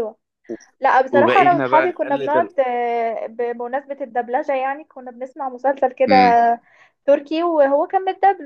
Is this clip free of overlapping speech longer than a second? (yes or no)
no